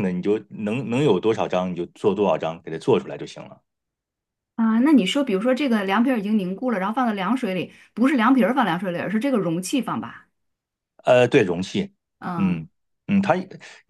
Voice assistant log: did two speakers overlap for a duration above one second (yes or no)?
no